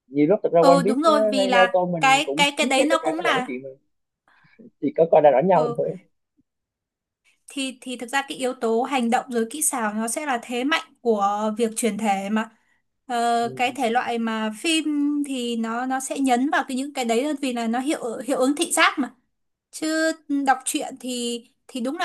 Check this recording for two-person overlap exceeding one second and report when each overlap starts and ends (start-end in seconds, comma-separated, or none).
0.6-3.5